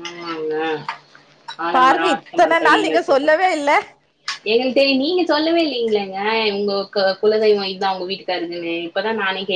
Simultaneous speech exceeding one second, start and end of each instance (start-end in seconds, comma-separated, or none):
1.8-3.5